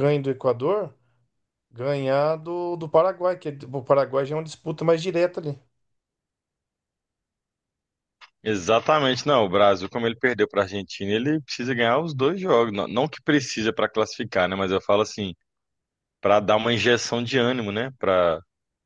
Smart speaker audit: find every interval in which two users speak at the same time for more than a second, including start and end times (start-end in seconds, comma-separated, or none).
none